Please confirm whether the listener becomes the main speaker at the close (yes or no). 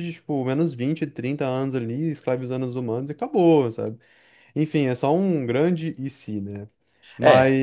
no